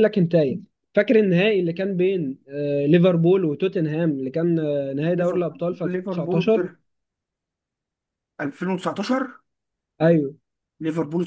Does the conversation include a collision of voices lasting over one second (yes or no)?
yes